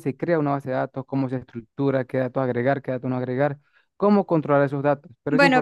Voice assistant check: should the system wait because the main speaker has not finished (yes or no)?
no